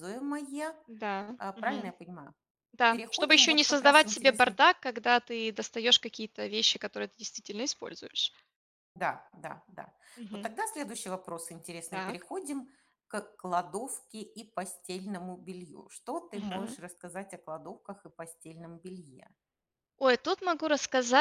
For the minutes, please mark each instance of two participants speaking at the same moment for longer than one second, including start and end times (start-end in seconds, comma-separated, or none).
2.9-4.6